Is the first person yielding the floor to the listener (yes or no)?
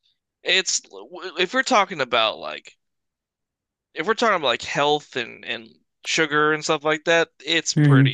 yes